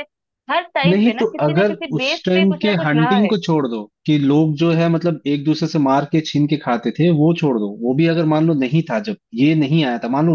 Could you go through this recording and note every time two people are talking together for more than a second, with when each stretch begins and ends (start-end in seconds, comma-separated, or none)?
0.9-3.3